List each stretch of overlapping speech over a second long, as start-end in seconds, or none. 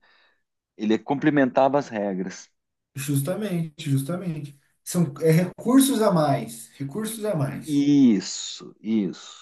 none